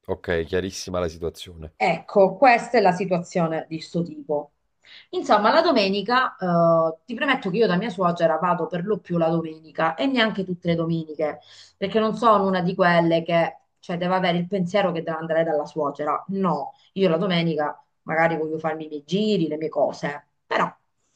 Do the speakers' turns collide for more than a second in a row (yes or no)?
no